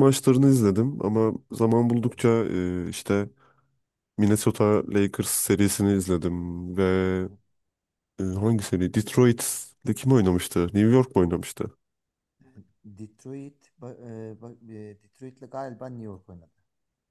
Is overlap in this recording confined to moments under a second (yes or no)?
yes